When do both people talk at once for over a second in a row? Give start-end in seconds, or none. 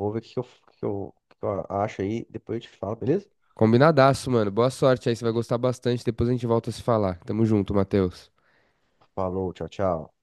none